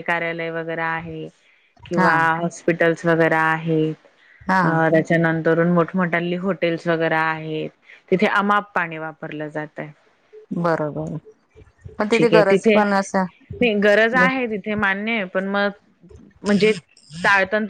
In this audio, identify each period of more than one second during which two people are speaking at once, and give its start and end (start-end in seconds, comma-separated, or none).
12.1-13.4